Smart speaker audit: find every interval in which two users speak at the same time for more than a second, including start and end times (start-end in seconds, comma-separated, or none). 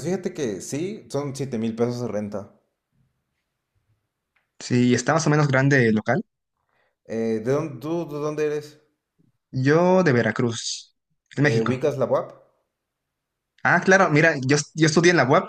none